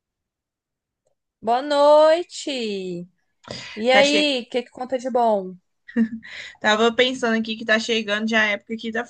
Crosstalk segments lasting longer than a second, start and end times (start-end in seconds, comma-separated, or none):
none